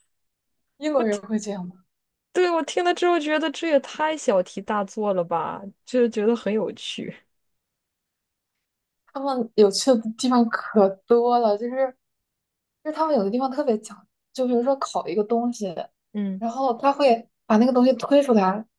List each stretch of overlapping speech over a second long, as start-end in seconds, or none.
none